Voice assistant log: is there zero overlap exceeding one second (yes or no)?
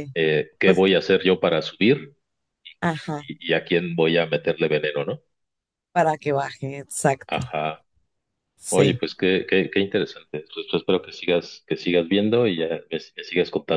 yes